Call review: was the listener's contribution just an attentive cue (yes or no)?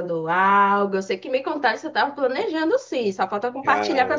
no